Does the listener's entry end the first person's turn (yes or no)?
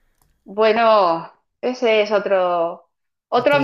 no